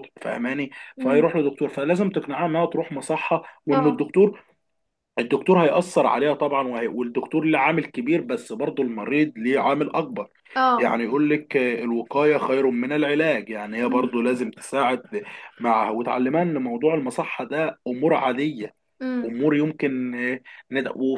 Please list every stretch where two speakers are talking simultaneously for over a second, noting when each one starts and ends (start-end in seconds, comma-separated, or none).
none